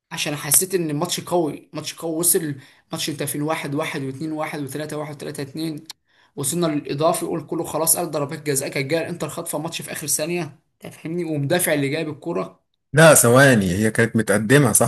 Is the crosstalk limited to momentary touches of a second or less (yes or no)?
yes